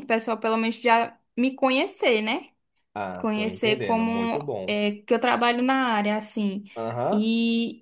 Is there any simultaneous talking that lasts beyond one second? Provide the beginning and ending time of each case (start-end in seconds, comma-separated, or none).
3.2-4.8